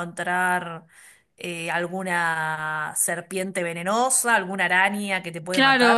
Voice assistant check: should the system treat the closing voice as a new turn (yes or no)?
yes